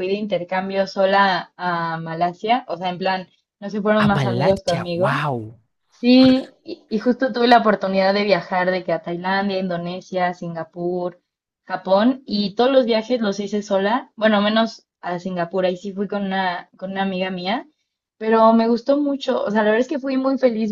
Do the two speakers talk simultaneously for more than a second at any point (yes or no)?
yes